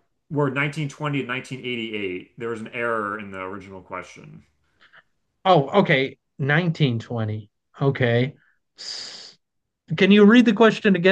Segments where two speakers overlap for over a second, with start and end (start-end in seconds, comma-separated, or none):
none